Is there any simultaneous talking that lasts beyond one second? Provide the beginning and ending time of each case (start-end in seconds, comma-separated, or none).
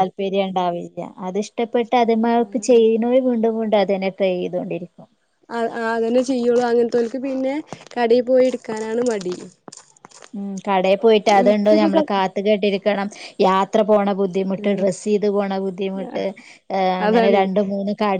none